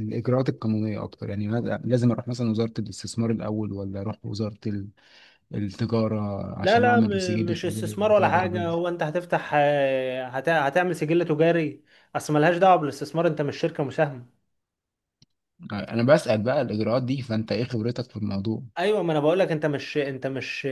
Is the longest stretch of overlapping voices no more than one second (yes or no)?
no